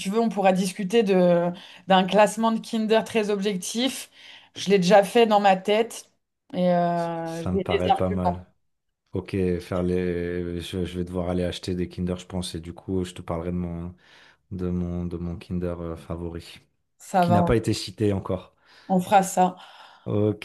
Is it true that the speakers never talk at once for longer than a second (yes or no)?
no